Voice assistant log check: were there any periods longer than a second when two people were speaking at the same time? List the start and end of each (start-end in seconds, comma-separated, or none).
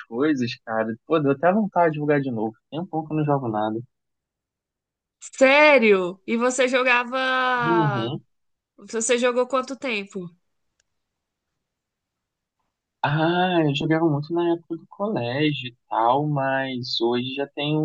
none